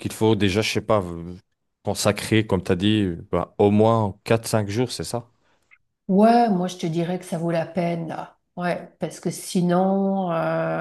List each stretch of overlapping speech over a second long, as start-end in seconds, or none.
none